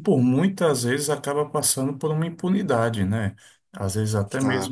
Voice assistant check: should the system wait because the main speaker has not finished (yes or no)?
yes